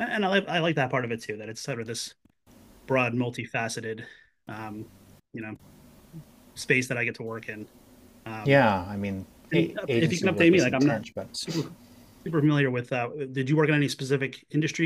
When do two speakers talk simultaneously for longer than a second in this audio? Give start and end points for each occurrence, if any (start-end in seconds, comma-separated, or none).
9.5-11.3